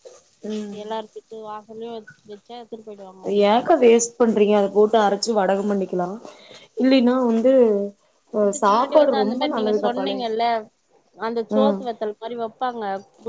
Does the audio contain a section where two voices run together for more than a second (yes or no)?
yes